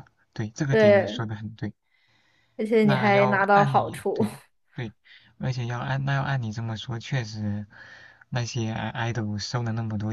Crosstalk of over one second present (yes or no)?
yes